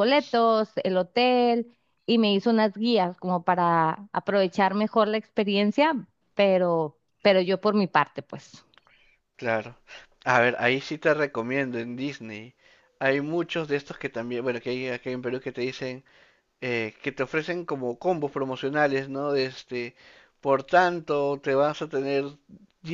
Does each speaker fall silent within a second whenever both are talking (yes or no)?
yes